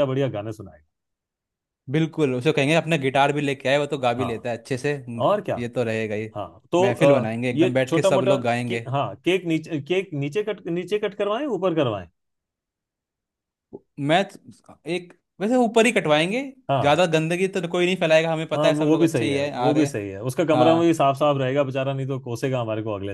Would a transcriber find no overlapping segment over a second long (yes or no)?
no